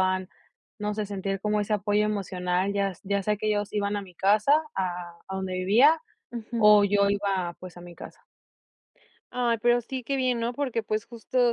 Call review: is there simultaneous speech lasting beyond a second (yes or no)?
no